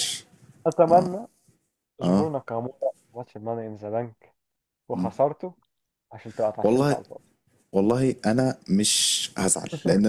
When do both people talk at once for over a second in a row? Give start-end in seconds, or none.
none